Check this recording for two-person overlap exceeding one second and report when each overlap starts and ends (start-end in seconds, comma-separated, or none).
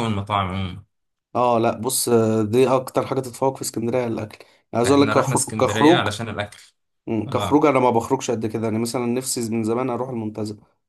4.8-6.1